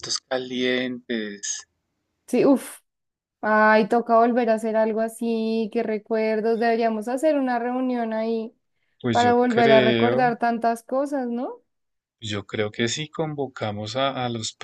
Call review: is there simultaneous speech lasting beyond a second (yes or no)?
yes